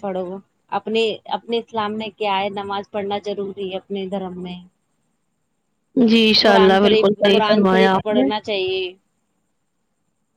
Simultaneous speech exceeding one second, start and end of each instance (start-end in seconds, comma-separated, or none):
6.5-8.3